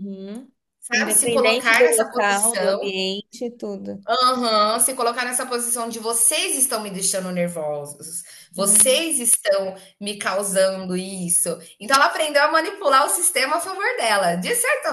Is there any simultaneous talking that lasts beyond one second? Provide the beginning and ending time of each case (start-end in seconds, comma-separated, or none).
0.9-2.9